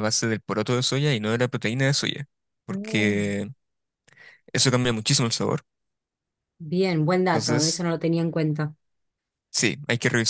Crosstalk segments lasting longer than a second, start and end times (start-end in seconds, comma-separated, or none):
none